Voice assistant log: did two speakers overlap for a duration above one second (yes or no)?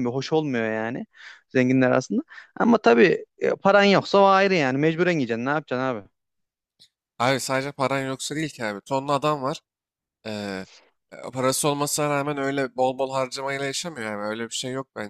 no